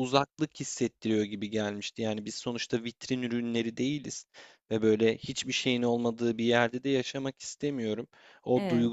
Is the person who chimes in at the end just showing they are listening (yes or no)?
yes